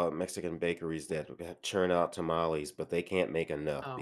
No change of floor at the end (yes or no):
no